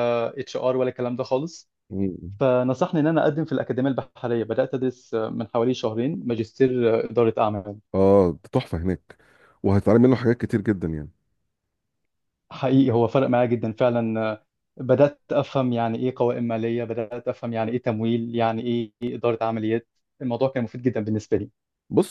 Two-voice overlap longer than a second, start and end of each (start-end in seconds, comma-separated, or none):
none